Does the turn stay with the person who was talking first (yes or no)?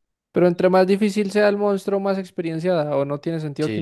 no